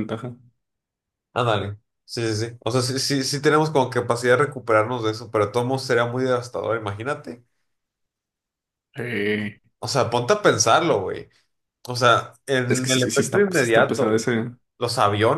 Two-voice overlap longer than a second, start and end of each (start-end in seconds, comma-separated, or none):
12.7-14.3